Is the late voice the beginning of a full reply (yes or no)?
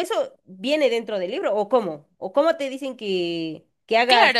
yes